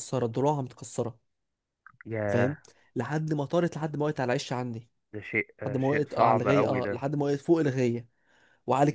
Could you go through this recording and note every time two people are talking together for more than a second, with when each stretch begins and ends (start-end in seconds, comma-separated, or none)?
5.7-7.0